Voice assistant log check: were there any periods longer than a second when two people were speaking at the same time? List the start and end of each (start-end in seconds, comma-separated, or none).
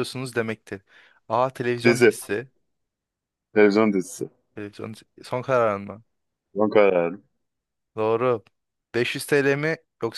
none